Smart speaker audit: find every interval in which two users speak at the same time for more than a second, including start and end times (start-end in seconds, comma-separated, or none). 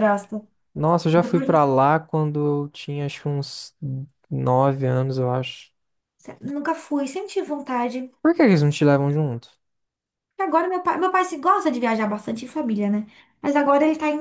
none